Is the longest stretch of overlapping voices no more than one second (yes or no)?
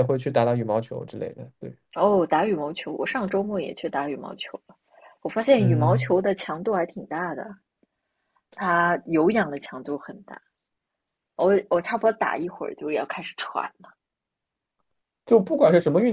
yes